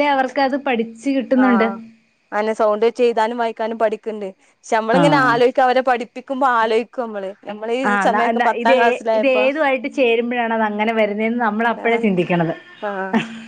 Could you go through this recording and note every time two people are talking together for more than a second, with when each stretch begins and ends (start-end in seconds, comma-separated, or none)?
none